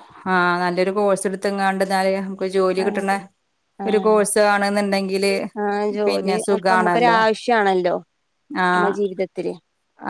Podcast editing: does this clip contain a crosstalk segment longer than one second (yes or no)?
no